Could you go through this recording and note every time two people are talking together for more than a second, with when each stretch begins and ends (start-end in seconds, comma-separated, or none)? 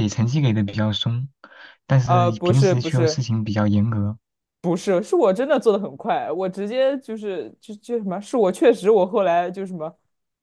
2.0-3.2